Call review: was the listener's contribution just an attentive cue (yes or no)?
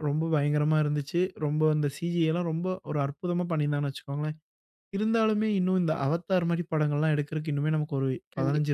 no